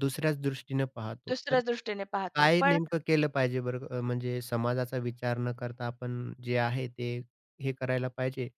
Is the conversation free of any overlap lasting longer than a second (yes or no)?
yes